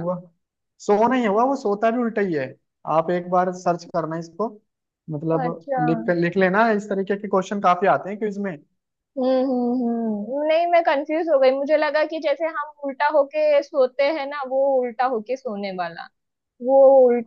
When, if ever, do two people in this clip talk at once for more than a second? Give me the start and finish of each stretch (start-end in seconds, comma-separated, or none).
none